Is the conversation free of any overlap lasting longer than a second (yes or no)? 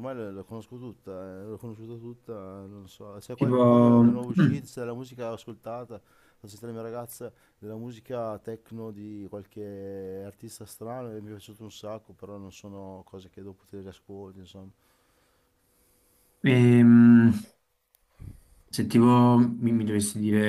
no